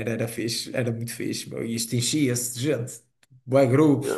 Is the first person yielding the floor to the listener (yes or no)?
yes